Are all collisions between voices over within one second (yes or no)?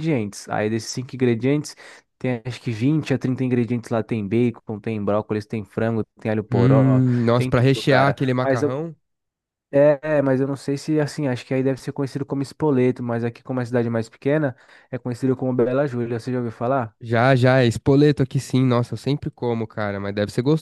no